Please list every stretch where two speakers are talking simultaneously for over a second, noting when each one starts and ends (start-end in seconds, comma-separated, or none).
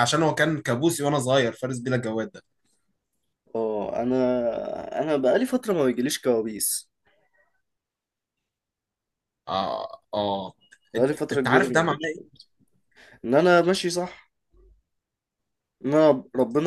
11.0-12.3